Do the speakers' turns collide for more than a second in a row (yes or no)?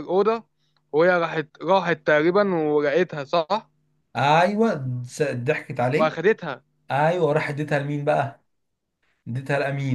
no